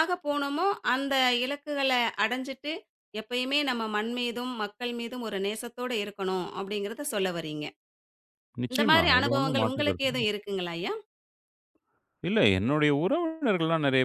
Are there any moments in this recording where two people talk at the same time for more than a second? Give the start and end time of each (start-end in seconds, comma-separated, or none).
8.7-10.2